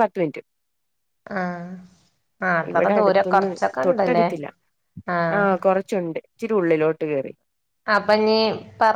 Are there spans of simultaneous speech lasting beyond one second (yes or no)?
yes